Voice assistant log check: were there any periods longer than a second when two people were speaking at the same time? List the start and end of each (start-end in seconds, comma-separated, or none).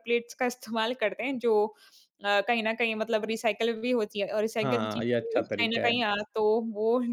4.6-6.1